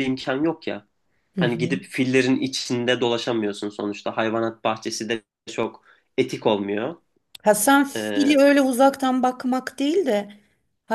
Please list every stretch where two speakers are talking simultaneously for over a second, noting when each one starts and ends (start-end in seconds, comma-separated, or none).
none